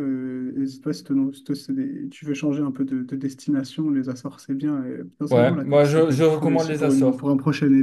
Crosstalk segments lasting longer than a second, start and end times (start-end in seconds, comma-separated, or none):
5.3-7.2